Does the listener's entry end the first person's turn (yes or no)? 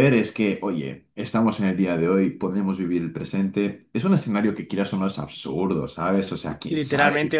yes